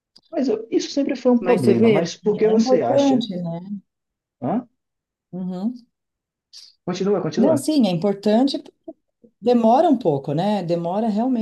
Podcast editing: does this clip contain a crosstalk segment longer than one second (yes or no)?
yes